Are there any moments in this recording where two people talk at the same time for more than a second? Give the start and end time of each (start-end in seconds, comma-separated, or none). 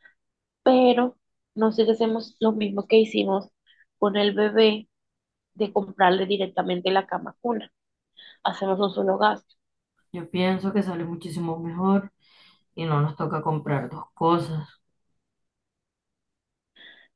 none